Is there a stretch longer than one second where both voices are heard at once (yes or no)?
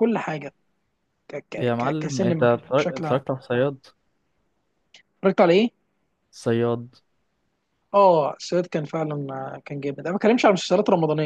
yes